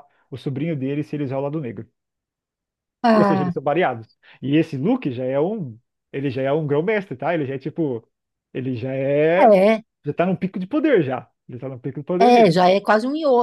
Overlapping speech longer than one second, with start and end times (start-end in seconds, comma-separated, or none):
none